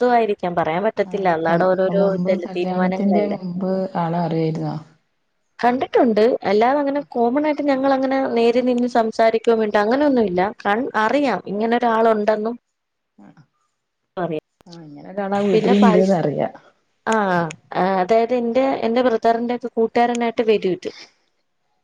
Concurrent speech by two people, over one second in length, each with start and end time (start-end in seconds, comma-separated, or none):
1.1-3.4